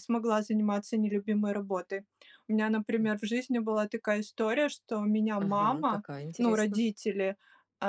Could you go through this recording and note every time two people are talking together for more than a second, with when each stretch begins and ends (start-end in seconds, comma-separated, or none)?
5.4-6.8